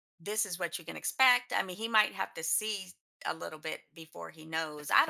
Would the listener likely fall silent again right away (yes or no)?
no